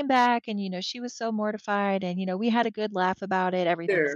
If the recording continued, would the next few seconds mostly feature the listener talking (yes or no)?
yes